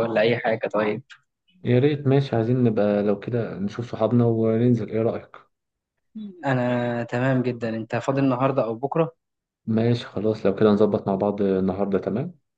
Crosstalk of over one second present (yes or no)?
no